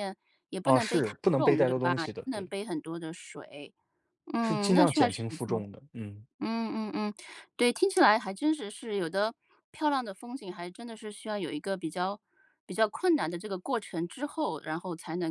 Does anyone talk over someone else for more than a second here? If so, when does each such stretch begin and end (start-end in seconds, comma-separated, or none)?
0.6-2.5, 4.4-5.6